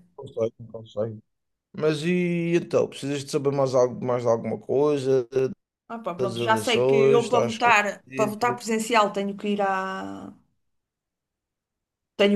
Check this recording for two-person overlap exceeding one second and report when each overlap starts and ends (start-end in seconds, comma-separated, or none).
6.2-8.6